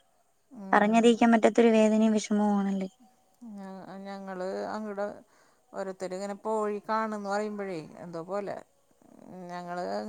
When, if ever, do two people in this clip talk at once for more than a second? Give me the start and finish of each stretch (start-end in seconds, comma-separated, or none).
none